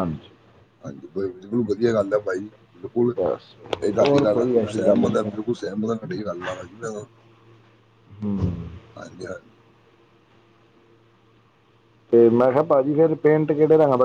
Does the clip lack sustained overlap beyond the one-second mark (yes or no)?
no